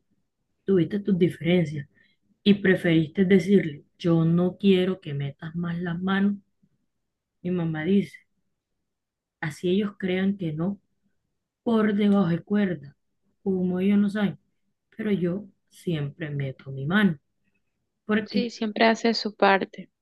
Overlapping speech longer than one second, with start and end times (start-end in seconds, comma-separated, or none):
none